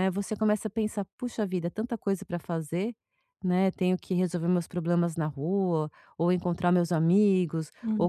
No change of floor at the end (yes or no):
yes